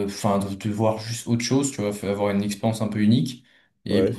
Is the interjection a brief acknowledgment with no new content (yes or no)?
yes